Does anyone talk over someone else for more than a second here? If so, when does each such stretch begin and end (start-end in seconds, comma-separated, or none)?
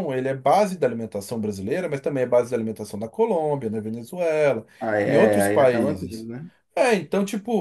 5.0-6.3